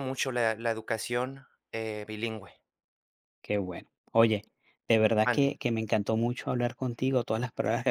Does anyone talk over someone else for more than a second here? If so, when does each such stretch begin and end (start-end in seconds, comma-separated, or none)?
none